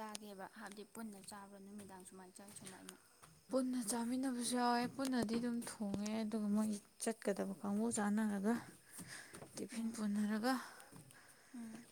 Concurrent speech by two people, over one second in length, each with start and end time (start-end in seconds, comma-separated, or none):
none